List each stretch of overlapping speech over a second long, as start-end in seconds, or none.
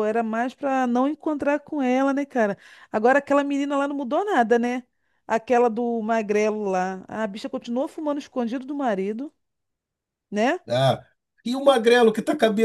none